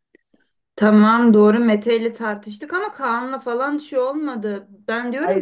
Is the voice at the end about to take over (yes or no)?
no